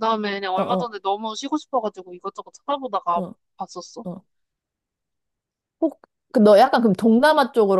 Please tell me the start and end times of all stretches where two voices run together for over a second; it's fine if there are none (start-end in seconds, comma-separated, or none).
none